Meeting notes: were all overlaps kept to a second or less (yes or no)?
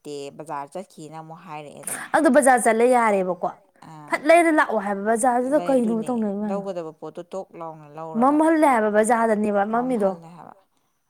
yes